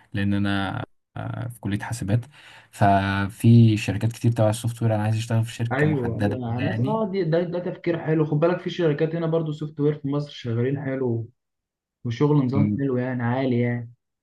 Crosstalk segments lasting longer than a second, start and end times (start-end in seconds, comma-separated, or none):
5.7-7.0